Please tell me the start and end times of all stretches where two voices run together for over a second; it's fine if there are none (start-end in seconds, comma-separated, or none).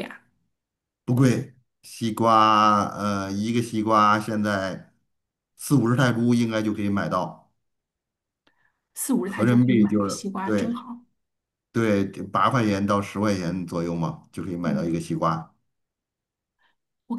9.2-10.8